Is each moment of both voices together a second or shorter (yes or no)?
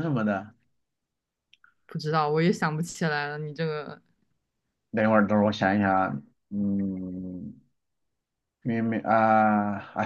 yes